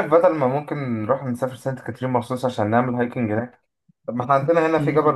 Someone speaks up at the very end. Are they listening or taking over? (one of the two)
listening